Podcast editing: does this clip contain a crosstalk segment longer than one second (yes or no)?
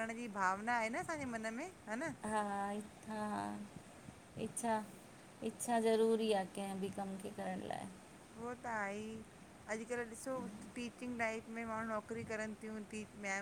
no